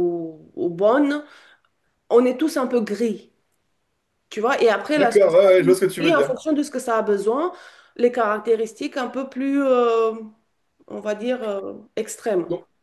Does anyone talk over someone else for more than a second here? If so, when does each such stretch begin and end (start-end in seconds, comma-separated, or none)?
5.0-6.4